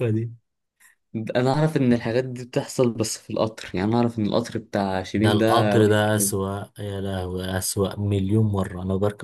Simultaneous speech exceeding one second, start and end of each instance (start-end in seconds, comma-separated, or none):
5.1-6.3